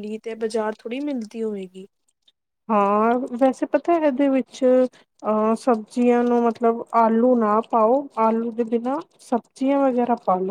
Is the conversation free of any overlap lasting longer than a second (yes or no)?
yes